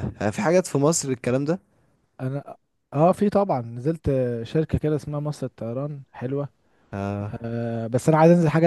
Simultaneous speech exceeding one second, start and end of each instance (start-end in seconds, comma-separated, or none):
none